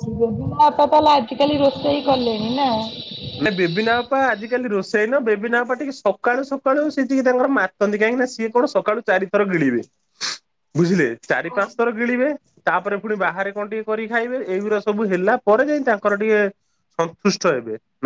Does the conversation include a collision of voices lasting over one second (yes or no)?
no